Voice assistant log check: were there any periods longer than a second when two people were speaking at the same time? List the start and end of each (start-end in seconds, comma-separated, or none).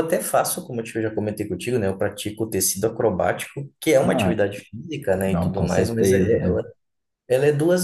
5.3-6.6